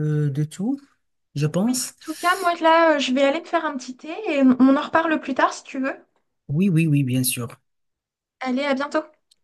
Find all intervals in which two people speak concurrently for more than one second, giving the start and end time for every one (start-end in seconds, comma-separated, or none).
none